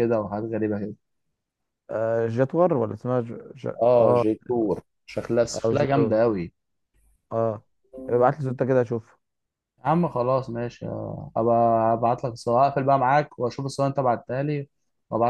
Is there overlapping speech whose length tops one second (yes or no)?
no